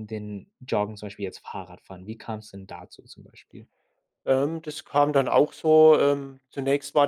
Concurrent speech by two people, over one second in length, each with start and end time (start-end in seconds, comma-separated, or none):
none